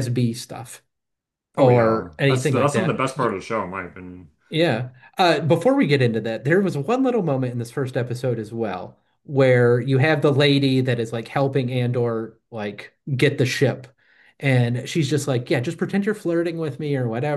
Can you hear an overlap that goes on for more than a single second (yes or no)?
yes